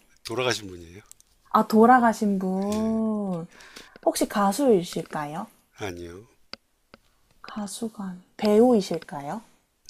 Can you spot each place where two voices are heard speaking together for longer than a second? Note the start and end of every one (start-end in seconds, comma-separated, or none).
none